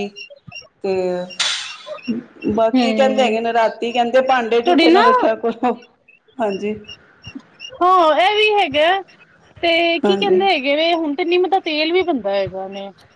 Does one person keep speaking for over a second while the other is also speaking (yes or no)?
no